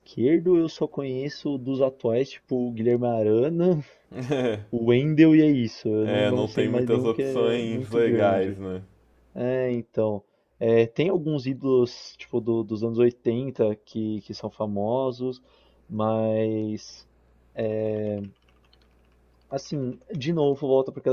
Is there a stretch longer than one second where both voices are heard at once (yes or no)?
yes